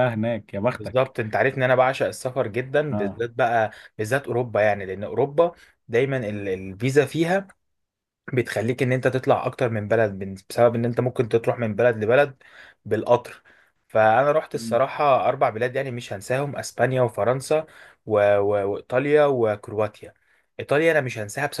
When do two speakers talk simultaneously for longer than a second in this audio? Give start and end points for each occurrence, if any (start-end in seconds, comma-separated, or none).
none